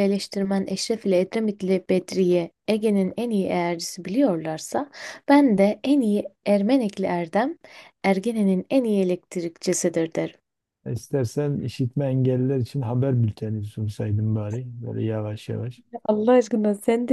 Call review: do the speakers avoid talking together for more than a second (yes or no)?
yes